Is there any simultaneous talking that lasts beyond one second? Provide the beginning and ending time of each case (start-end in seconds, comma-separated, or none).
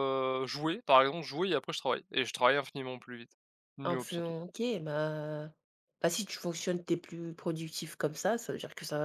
none